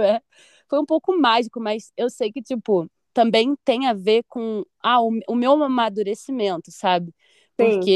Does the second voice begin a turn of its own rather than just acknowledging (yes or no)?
no